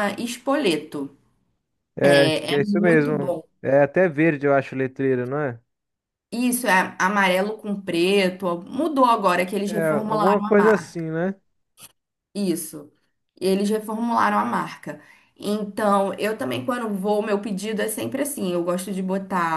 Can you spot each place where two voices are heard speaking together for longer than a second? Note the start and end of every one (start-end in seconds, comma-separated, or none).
2.1-3.5, 9.6-11.0